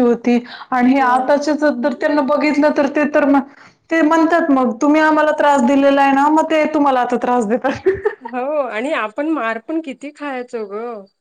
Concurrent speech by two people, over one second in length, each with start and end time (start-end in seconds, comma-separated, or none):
none